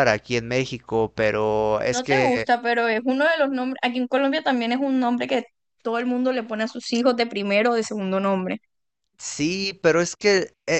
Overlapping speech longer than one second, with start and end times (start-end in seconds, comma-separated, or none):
none